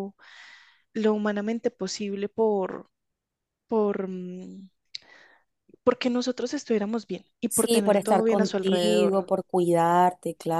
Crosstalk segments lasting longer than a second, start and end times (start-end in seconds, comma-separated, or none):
7.5-9.2